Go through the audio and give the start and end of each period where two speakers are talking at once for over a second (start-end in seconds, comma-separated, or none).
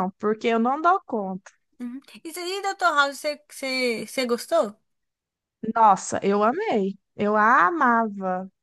none